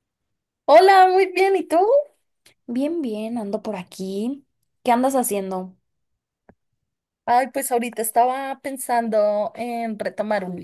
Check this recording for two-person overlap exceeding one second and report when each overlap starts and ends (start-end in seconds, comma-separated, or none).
none